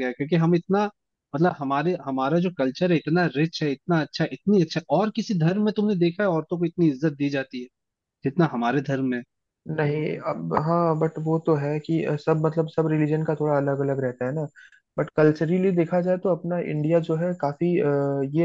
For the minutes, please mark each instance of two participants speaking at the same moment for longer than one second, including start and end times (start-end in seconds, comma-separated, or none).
none